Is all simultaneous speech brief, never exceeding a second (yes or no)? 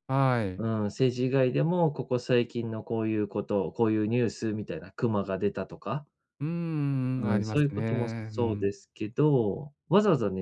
no